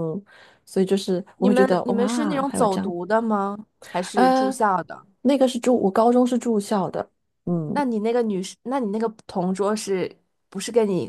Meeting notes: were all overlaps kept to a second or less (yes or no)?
no